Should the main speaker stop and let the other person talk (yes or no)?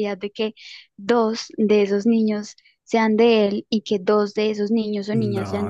yes